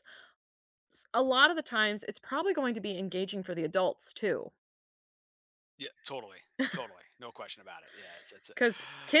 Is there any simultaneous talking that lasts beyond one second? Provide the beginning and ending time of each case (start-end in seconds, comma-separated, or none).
none